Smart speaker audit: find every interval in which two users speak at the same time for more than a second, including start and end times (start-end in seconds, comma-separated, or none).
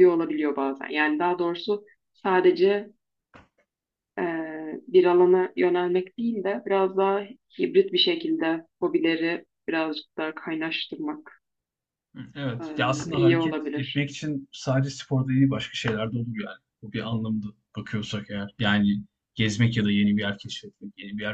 12.6-14.0